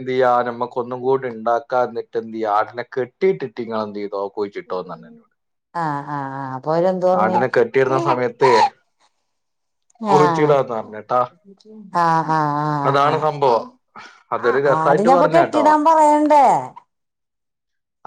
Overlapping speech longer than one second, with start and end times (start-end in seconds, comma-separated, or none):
14.3-15.7